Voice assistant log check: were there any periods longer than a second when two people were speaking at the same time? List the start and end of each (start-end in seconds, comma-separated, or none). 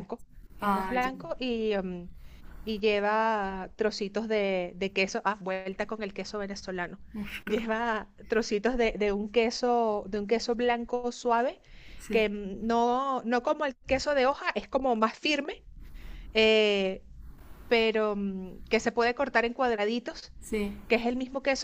none